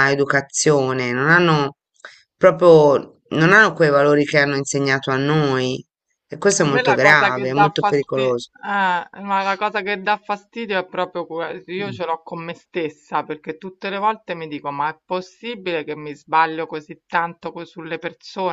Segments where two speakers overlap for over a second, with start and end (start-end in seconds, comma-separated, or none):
6.6-8.5